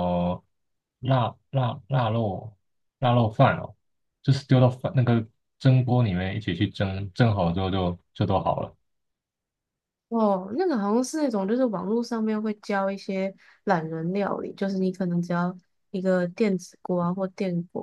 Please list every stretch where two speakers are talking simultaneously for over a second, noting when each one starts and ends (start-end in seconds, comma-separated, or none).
none